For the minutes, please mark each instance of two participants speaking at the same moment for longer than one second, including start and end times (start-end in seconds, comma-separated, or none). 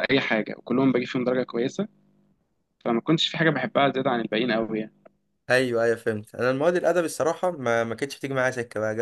none